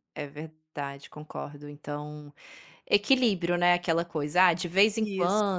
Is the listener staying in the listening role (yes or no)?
yes